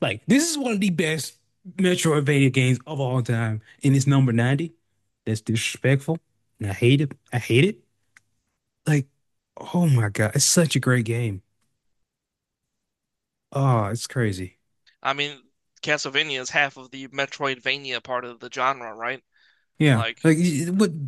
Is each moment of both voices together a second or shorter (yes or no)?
yes